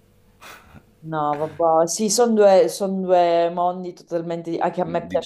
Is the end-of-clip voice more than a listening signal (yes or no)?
no